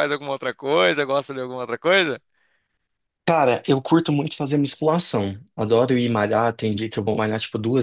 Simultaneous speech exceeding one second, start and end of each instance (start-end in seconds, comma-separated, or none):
none